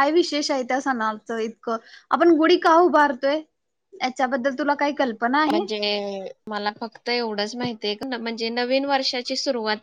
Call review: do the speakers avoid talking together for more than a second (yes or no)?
yes